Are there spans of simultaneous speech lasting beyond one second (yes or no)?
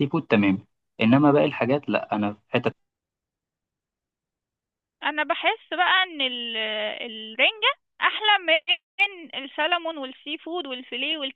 no